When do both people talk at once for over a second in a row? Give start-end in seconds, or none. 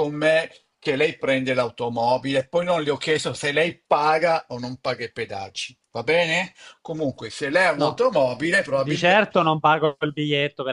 none